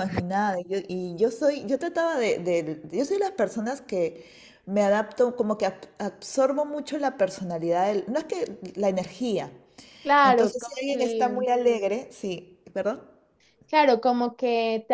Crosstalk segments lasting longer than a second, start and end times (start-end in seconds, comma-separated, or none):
10.2-11.4